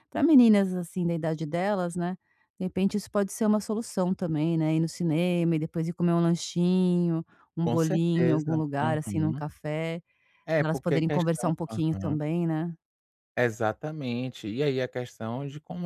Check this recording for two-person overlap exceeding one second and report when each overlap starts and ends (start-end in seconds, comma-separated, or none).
7.6-9.4, 10.6-12.2